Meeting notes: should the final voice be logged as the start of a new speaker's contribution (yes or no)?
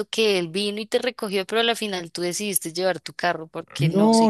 yes